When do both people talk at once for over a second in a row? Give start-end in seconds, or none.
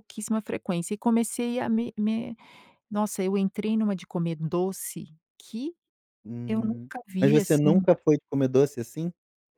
6.5-7.9